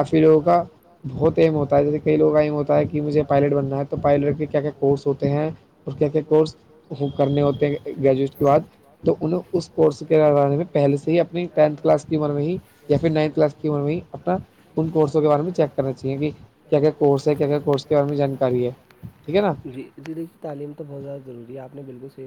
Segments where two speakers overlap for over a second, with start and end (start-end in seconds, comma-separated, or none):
none